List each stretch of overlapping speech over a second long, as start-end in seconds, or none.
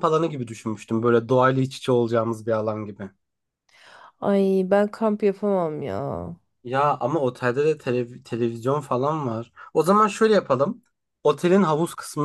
none